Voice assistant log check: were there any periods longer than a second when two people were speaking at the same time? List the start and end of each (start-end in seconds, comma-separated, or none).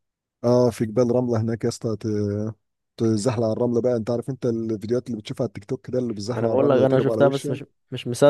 6.3-7.6